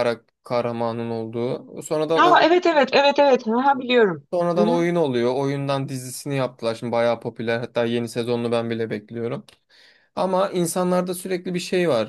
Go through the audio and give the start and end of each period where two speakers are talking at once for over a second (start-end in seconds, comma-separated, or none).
none